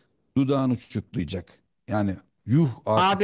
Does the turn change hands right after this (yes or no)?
yes